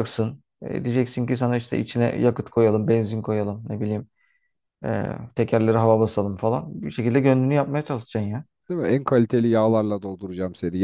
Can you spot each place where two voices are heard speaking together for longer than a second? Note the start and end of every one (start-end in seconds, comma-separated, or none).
none